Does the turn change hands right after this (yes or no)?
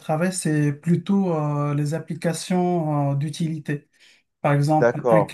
no